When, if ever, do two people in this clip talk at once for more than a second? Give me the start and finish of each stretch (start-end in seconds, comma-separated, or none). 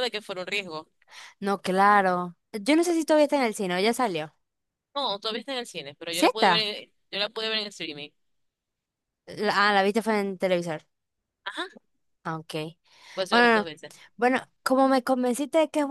none